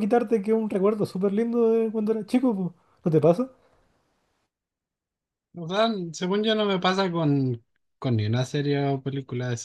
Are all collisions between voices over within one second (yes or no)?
yes